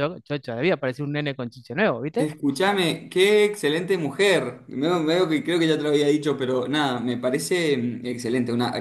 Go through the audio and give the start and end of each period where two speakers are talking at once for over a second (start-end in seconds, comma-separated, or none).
none